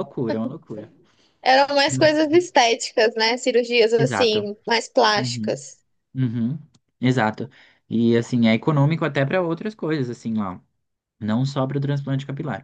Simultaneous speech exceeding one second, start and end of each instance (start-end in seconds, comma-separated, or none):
none